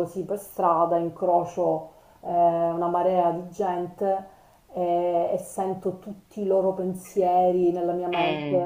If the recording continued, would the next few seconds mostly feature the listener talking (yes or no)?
no